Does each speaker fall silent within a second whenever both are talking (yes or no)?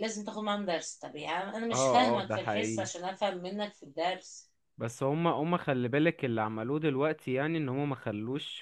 no